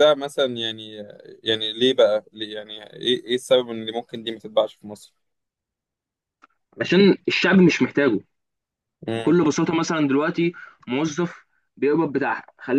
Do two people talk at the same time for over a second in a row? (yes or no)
no